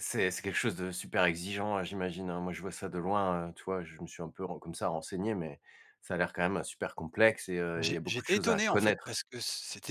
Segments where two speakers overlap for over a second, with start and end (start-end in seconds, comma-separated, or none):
7.8-9.2